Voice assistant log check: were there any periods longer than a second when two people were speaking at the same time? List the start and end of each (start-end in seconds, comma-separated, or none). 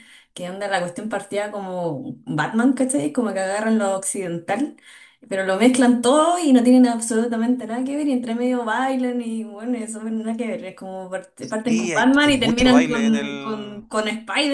11.7-13.8